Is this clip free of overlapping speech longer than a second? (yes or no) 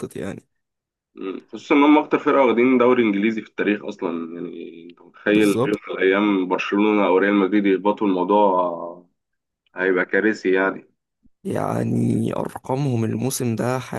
yes